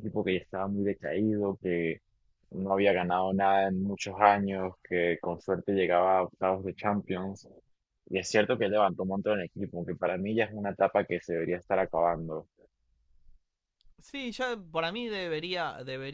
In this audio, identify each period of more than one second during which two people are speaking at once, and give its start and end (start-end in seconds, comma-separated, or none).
none